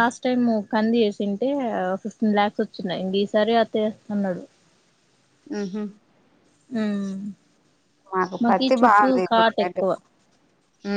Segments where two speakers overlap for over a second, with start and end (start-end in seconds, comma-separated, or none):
none